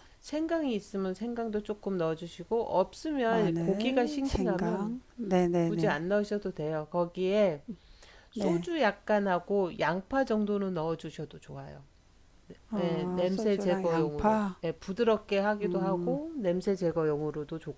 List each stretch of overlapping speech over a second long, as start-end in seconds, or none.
3.3-5.0, 12.8-14.6